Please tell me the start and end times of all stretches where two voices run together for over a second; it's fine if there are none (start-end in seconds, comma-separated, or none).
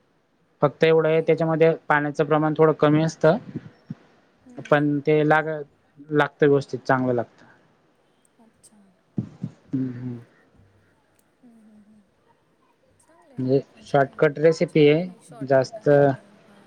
none